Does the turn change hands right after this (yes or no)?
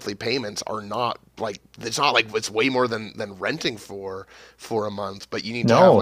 yes